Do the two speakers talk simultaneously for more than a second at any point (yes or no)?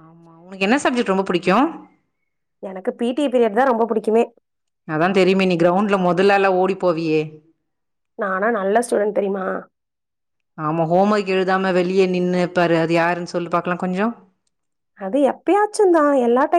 no